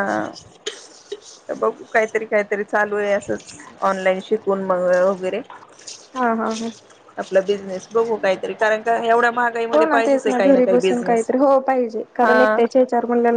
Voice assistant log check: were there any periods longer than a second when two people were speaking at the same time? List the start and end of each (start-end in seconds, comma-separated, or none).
9.7-11.3